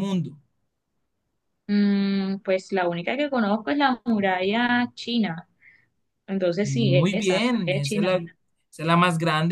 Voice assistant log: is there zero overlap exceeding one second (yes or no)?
no